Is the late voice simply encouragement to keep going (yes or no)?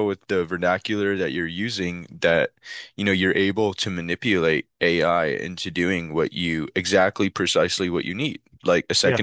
yes